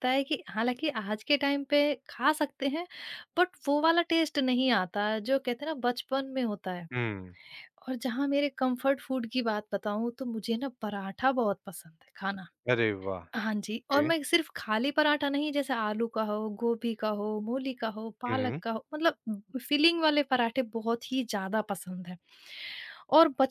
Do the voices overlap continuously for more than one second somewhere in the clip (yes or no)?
no